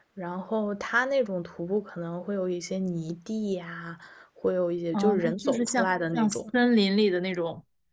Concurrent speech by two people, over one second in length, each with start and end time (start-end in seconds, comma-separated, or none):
4.9-6.5